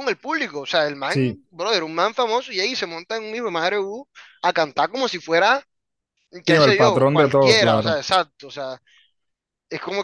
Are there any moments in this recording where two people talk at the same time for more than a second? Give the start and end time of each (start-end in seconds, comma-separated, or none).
6.5-7.9